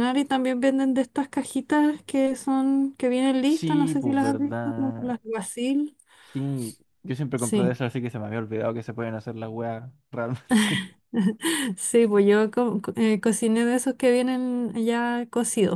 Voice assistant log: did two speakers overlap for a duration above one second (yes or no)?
yes